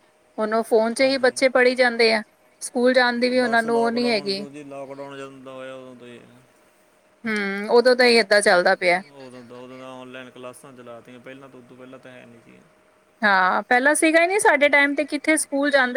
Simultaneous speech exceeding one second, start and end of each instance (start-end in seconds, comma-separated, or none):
none